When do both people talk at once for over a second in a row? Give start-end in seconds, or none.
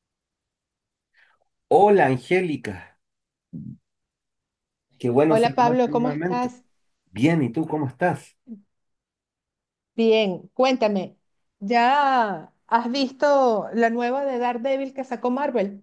5.3-6.5